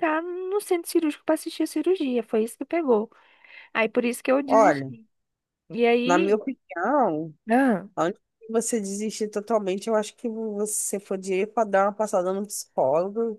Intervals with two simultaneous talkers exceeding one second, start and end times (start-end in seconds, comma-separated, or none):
none